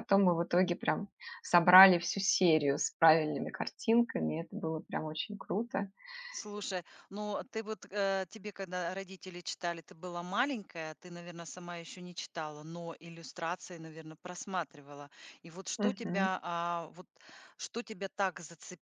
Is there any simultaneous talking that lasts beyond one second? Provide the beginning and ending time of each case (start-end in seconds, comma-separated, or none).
none